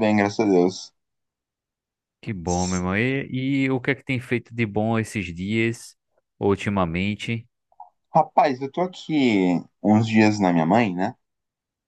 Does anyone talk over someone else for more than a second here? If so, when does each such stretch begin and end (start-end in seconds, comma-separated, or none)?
none